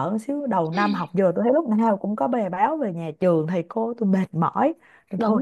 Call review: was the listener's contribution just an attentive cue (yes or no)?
no